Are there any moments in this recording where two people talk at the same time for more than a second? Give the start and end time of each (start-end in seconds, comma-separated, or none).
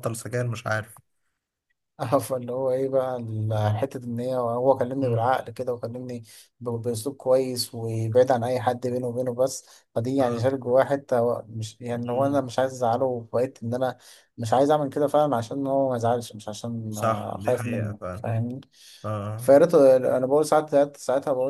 16.9-18.2